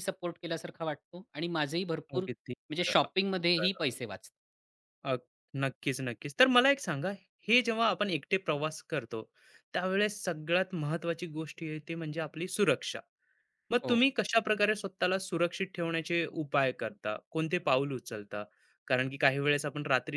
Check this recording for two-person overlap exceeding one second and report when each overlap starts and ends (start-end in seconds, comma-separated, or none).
2.1-3.8